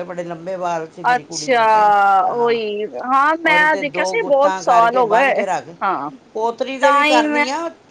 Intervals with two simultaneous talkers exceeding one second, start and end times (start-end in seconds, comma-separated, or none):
3.5-5.4